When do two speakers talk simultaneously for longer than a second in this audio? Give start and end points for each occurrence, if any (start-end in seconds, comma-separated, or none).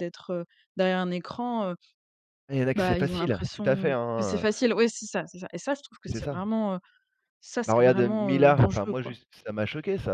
2.8-4.4, 7.7-9.1